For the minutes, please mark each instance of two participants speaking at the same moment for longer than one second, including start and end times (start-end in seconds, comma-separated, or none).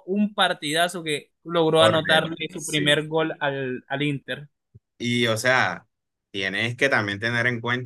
1.8-3.0